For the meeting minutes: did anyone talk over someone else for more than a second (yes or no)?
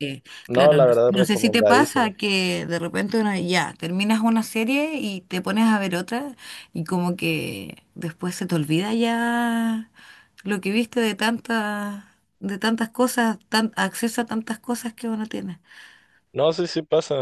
yes